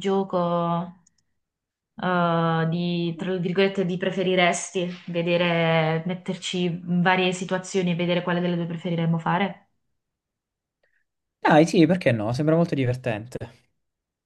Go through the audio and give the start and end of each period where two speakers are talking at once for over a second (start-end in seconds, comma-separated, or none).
none